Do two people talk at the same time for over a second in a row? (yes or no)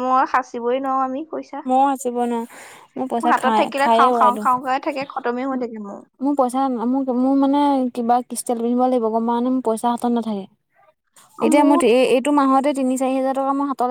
yes